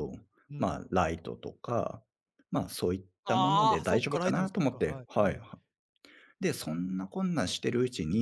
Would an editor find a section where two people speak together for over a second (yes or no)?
yes